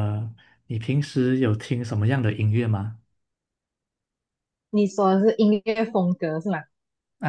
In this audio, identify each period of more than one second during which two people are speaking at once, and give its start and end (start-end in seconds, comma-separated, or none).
none